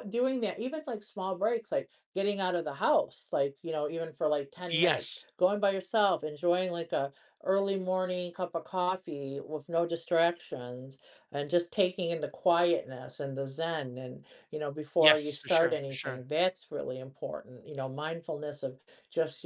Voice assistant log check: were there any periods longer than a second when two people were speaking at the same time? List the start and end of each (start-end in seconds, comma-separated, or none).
15.0-16.2